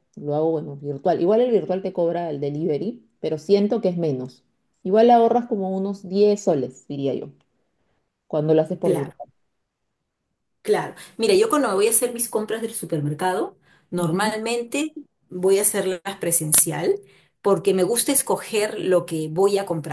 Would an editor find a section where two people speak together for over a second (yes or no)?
no